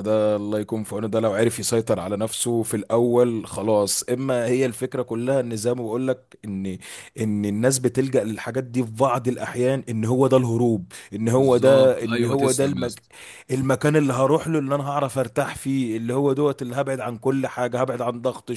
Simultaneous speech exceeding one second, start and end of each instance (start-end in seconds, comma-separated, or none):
11.4-13.0